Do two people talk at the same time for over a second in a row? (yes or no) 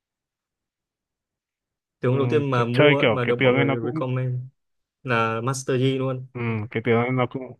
yes